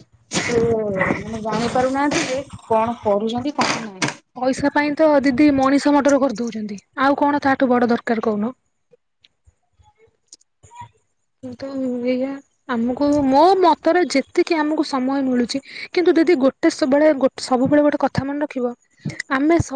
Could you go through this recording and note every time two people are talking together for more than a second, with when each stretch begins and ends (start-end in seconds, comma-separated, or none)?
none